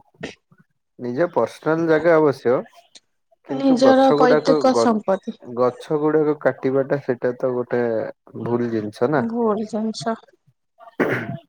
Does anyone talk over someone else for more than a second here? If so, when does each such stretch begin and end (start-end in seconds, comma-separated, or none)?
3.6-5.3